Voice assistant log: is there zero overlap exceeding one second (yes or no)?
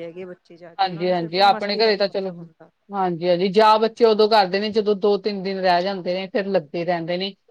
no